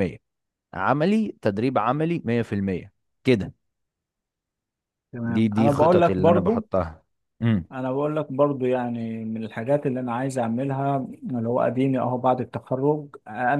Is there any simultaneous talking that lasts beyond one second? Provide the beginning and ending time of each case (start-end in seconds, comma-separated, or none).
5.2-6.6